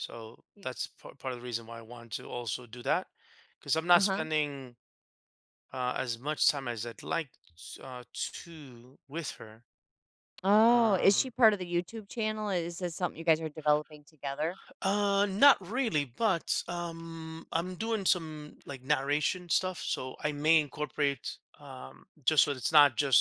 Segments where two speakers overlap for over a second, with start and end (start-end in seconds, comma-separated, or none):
none